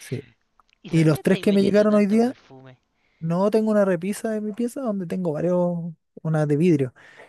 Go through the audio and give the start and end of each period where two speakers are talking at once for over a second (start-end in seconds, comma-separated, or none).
0.9-2.4